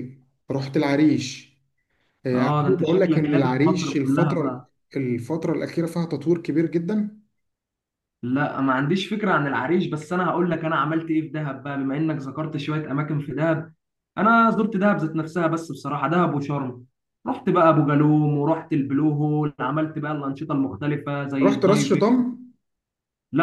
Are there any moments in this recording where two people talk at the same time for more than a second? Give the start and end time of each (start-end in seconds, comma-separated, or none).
2.3-4.7